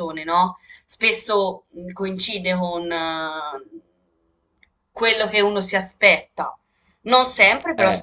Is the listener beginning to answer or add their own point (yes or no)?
no